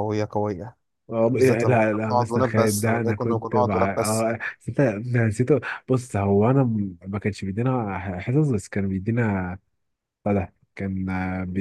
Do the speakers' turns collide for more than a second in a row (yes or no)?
yes